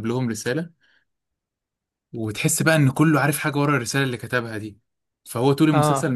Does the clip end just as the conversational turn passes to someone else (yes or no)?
no